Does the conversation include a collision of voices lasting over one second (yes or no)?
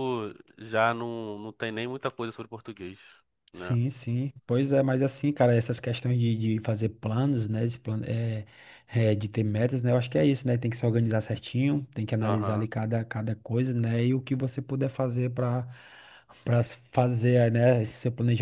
no